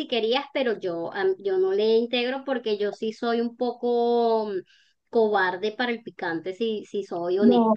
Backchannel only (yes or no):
no